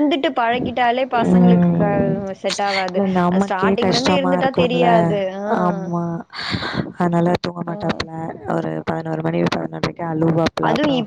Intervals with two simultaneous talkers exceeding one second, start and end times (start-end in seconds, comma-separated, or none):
2.9-4.9